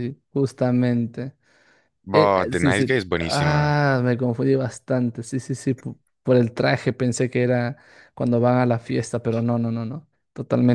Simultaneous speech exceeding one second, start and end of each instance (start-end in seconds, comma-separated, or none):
2.1-3.8